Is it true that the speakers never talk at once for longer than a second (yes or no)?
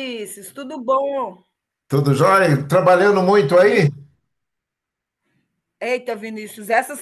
yes